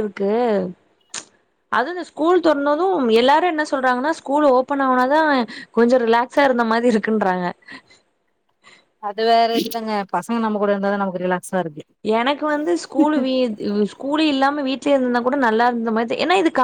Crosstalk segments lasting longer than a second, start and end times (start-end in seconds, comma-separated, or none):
none